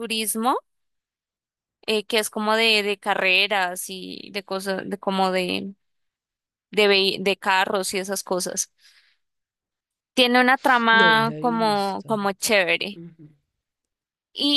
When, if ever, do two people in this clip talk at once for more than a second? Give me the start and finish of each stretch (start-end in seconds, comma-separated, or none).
10.9-12.2